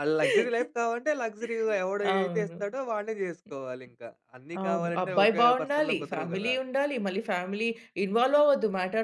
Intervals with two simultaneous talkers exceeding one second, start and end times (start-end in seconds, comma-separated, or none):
4.6-6.5